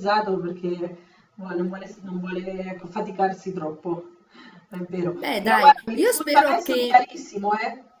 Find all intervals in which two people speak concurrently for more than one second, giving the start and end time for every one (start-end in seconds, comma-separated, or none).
5.1-7.0